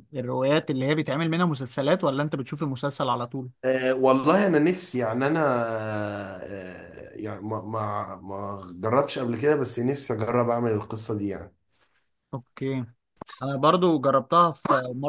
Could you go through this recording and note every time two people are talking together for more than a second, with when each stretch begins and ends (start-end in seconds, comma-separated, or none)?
none